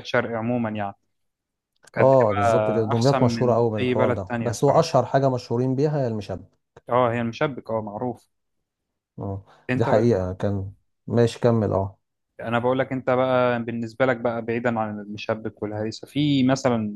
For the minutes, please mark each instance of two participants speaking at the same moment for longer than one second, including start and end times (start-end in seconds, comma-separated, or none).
1.9-4.9